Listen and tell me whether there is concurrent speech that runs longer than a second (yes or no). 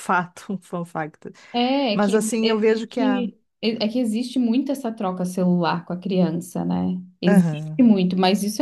yes